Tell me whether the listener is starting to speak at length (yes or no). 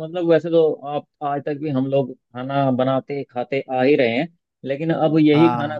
no